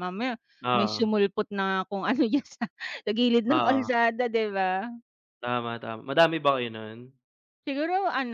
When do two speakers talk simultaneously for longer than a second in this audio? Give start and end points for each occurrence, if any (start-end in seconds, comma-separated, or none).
none